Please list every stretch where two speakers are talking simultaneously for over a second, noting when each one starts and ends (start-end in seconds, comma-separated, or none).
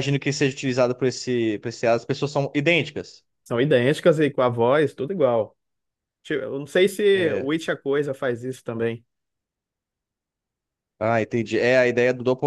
none